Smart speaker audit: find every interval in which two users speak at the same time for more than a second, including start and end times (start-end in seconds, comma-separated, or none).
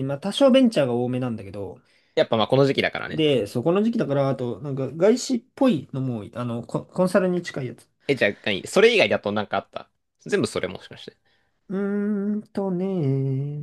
none